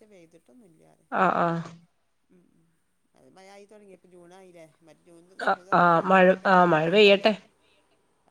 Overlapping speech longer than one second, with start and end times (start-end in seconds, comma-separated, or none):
5.5-7.3